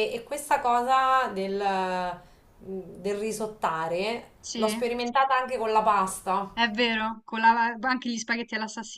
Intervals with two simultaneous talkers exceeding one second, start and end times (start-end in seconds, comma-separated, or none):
none